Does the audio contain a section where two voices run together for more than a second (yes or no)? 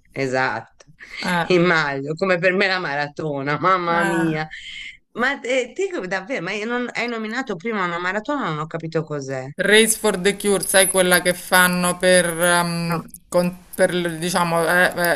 no